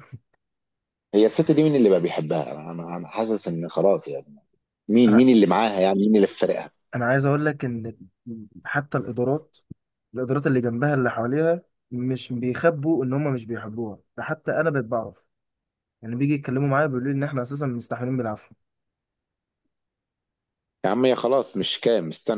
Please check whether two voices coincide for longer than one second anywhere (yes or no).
no